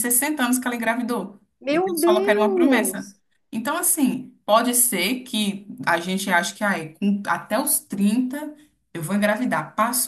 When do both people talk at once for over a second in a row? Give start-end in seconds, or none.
1.6-3.1